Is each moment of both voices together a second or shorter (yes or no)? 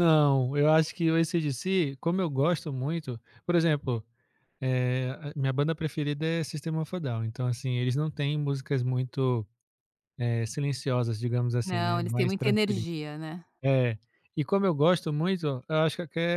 no